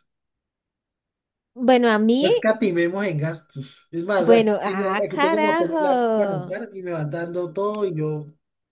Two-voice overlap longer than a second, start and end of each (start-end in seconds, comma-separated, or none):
4.2-6.6